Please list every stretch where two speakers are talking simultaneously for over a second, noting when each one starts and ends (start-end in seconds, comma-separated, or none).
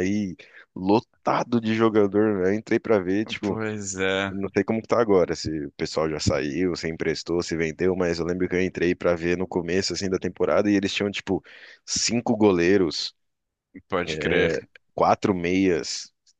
none